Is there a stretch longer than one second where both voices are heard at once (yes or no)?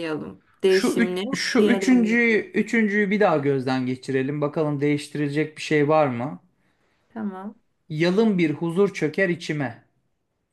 yes